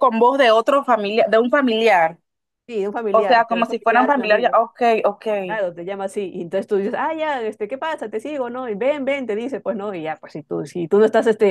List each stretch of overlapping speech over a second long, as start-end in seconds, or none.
3.1-4.6